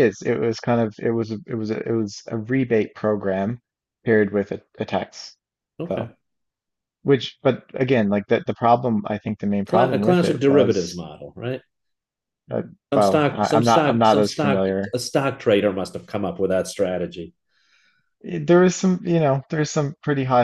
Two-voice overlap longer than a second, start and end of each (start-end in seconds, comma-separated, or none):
9.7-11.0, 12.9-14.9